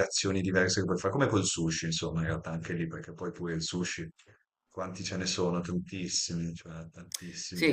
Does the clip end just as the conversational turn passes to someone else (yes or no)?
yes